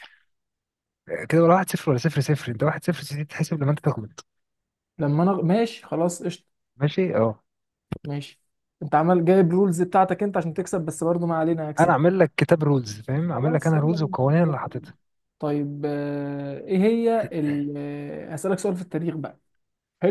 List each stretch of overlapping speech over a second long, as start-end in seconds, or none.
13.3-14.9